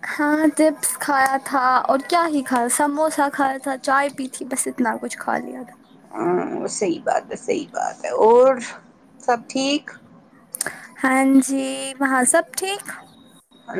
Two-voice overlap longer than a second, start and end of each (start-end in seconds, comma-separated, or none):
none